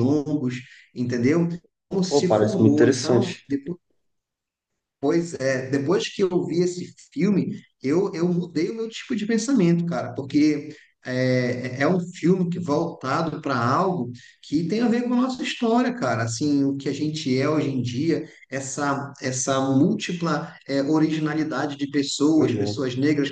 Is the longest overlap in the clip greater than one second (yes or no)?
yes